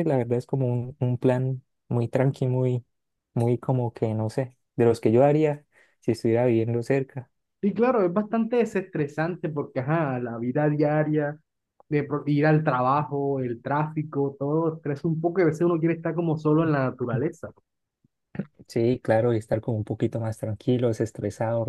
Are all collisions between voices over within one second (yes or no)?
yes